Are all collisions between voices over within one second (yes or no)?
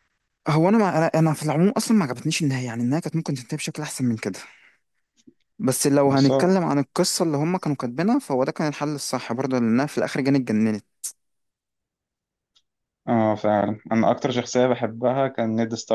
yes